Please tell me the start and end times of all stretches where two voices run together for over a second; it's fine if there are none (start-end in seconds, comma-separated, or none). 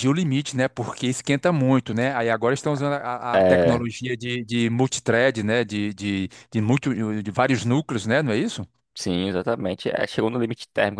none